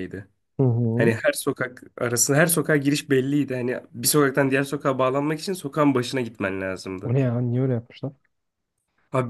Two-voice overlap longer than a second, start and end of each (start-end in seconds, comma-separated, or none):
none